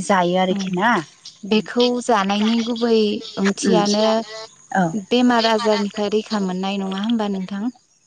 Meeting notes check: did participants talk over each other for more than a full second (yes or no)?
no